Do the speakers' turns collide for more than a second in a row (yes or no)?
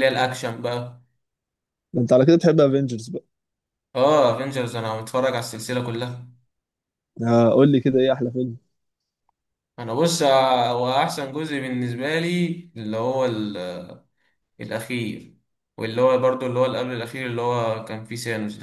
no